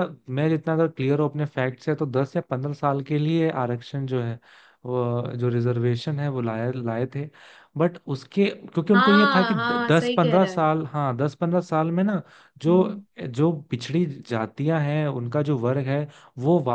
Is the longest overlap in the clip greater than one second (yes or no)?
yes